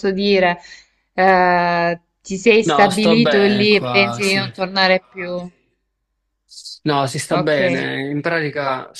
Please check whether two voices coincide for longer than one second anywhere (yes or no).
yes